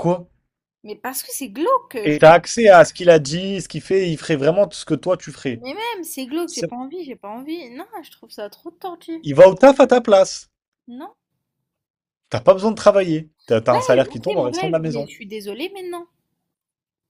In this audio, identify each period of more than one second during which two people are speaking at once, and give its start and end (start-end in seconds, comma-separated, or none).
13.7-15.1